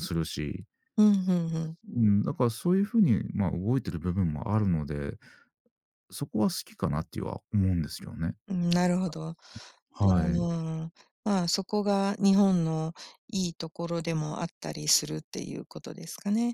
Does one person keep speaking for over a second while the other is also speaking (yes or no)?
no